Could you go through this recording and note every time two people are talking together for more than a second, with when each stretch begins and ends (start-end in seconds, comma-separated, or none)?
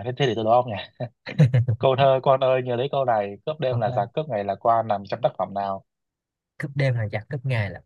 none